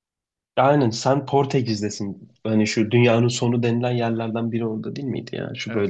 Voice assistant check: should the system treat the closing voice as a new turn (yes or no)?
yes